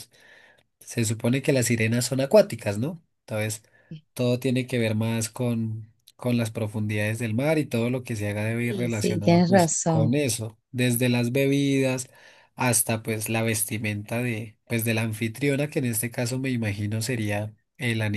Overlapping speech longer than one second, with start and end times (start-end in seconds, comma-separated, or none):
8.6-10.2